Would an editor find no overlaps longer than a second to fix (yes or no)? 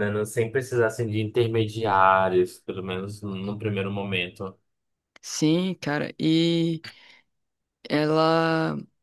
yes